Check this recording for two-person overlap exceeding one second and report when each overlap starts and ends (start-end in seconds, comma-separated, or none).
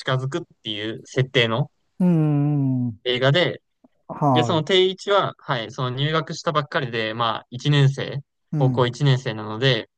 none